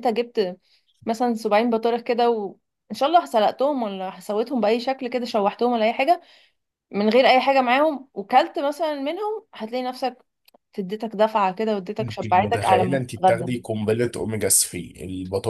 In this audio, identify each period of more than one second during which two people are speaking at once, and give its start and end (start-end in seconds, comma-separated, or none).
12.0-13.5